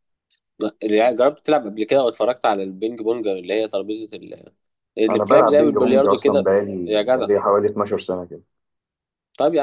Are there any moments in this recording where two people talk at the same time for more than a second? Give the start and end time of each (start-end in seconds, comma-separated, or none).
5.1-7.3